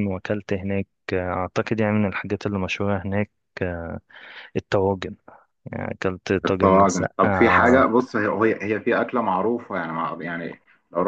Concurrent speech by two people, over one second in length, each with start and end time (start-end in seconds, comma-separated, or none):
6.5-7.9